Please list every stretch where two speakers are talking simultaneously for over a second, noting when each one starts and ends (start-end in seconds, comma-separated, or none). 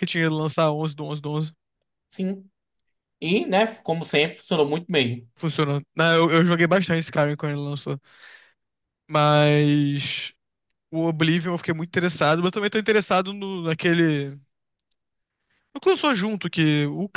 none